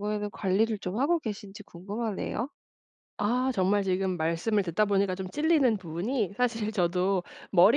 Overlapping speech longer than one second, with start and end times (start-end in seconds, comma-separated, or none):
none